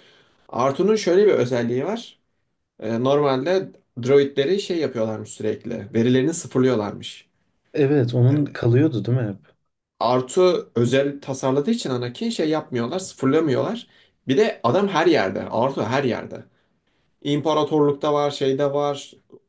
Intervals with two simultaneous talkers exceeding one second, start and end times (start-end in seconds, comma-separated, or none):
none